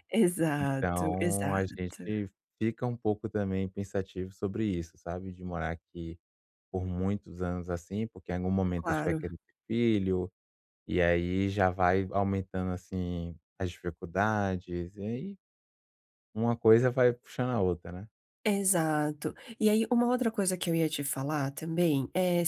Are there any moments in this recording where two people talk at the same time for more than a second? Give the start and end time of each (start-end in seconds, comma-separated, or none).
0.6-2.0